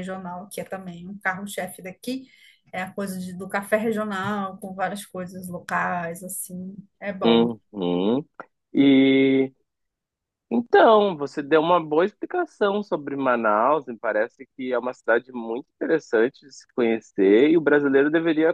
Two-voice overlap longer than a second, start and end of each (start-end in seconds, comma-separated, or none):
none